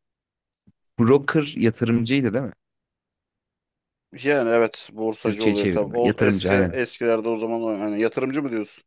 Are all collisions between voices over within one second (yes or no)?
no